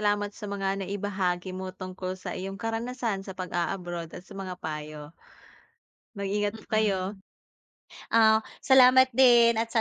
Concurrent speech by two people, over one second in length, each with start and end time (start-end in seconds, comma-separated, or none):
none